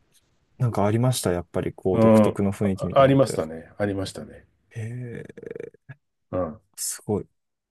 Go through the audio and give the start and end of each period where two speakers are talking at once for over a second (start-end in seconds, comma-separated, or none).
1.9-3.5